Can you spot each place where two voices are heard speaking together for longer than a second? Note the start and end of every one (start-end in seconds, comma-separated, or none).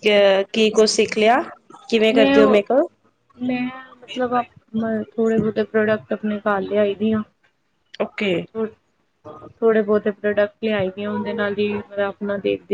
none